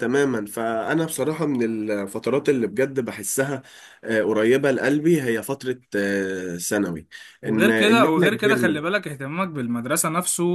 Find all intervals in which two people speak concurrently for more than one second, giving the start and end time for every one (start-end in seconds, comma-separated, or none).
7.5-8.8